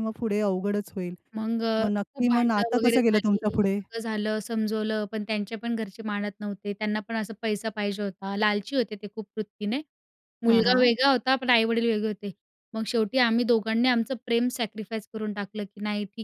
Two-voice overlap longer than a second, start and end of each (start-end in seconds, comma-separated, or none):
1.8-3.4